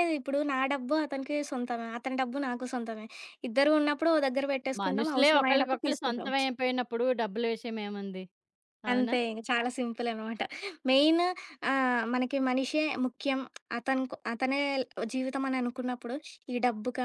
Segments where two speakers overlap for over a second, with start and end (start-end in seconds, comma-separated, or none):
4.8-6.3